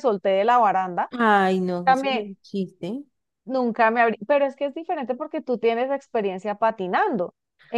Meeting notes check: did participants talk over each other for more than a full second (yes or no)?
no